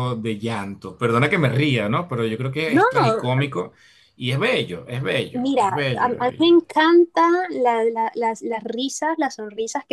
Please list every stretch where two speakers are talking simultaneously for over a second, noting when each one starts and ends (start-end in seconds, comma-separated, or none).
5.3-6.6